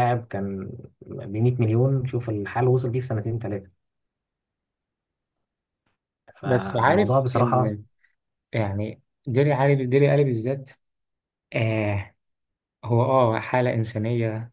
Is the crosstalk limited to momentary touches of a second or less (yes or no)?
no